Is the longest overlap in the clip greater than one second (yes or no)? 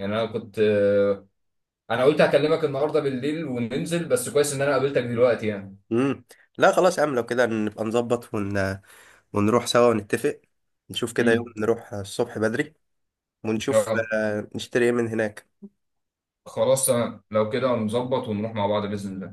no